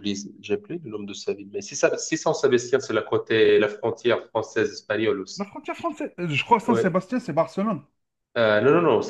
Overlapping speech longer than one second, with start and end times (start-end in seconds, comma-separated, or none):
none